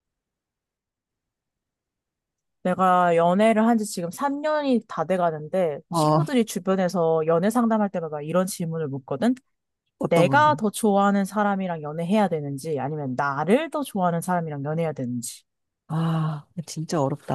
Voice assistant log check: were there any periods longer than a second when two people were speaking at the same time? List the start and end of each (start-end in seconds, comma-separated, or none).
none